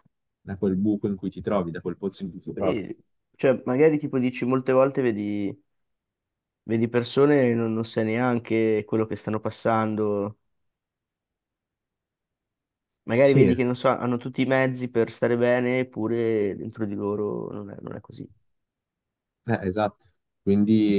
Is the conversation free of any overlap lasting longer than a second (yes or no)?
yes